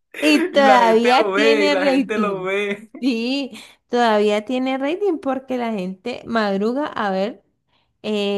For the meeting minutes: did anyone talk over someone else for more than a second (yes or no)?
yes